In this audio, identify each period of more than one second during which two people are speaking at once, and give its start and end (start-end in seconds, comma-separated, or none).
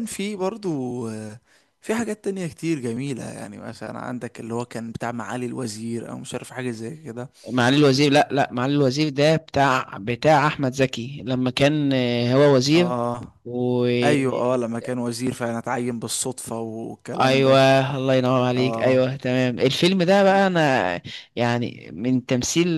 none